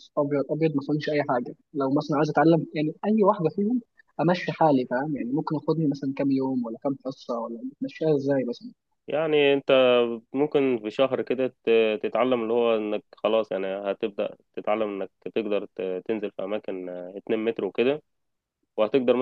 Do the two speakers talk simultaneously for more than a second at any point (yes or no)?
no